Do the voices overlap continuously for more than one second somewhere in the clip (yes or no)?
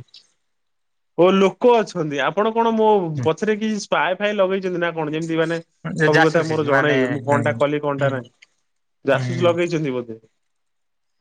yes